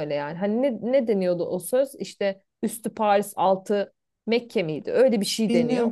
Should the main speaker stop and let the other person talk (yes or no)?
yes